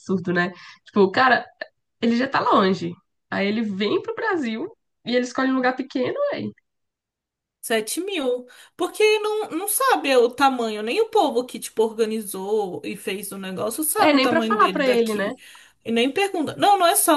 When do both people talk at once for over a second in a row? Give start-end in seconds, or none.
14.0-15.3